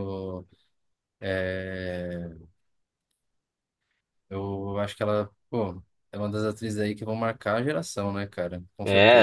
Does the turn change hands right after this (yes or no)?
yes